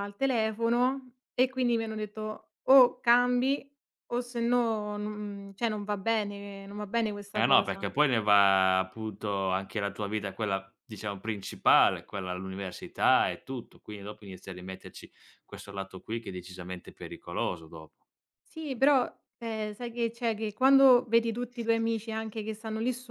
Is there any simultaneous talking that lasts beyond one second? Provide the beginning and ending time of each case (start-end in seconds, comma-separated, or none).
none